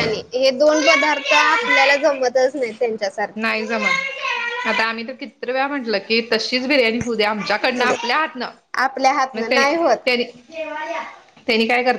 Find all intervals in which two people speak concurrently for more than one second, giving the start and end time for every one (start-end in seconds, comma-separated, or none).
none